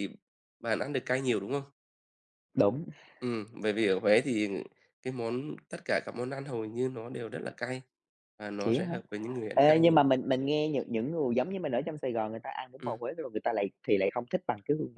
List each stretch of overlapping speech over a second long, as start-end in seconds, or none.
none